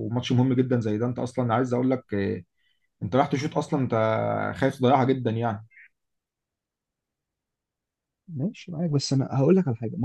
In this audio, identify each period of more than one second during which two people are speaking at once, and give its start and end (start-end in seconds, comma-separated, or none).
none